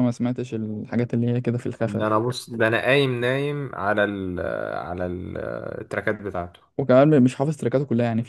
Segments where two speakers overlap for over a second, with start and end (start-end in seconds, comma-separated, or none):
none